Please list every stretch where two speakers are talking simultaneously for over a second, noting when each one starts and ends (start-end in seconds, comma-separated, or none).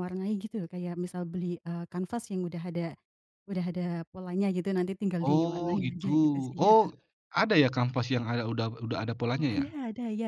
5.2-6.9